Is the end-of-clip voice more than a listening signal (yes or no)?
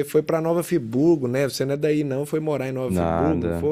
yes